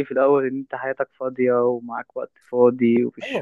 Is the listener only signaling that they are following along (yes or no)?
no